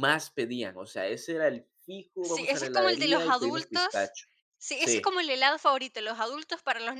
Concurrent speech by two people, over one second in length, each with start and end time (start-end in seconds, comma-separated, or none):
2.2-4.1